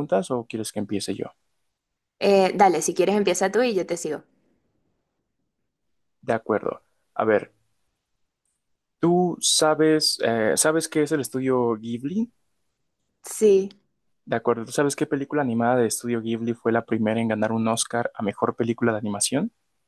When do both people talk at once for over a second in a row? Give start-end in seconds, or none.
none